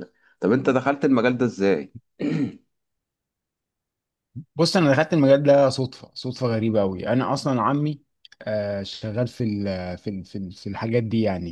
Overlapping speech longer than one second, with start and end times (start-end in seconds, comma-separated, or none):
none